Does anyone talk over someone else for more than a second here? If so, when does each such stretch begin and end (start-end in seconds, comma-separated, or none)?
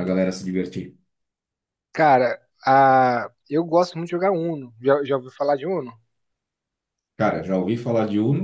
none